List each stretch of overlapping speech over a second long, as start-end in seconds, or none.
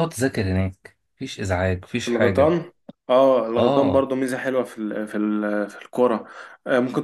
none